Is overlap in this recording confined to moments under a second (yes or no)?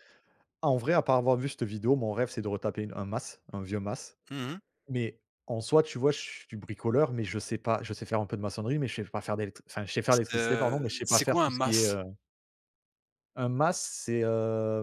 no